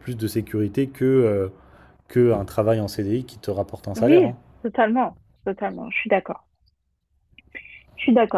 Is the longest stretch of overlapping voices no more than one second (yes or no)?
yes